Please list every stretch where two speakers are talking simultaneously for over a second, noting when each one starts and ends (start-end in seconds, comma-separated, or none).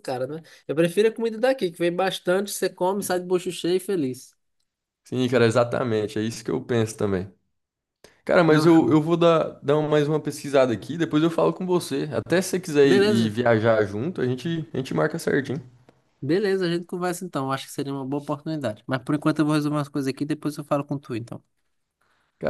none